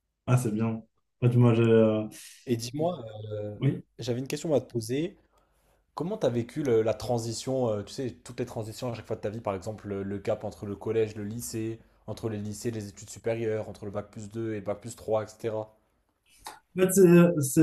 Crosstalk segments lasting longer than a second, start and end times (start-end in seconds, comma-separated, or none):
none